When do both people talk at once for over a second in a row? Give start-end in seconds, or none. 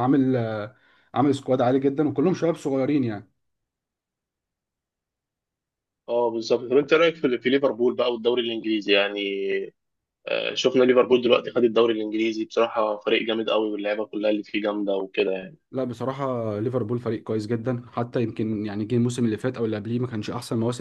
none